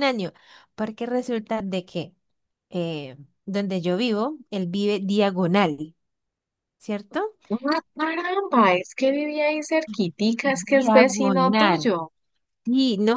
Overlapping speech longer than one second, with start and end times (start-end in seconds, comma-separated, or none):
10.4-11.9